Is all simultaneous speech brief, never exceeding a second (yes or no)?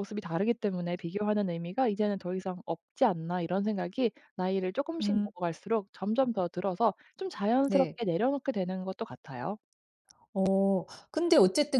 yes